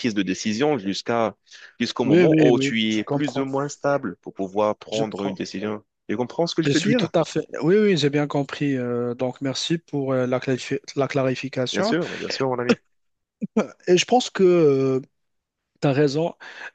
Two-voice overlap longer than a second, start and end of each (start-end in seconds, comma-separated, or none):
2.0-3.5